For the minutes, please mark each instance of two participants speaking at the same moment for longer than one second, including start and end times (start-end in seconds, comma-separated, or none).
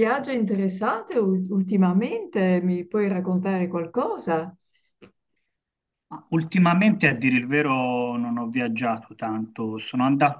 none